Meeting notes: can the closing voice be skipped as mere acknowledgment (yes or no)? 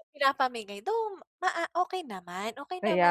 no